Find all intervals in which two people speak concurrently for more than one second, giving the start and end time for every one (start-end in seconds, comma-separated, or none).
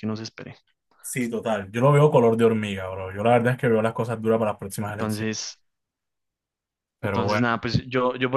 none